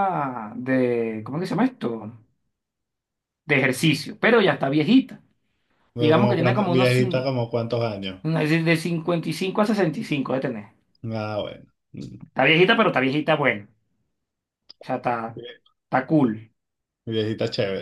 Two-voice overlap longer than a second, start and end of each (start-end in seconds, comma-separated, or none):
6.0-7.3